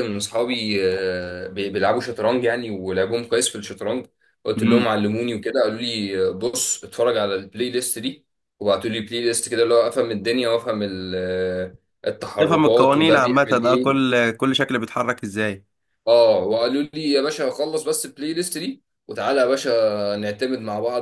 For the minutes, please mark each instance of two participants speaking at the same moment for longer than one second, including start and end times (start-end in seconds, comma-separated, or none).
12.4-14.1